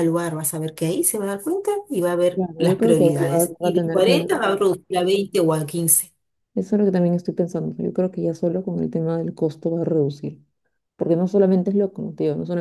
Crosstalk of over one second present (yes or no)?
yes